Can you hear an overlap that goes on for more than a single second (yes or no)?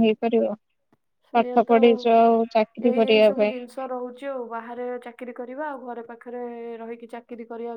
no